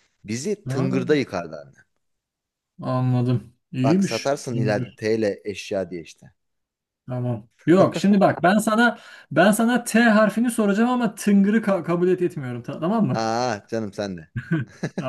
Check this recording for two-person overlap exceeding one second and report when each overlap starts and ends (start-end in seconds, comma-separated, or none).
none